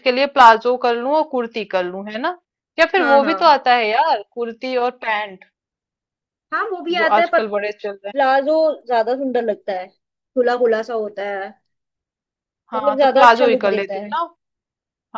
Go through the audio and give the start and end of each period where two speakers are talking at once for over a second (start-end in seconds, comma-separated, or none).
12.7-14.1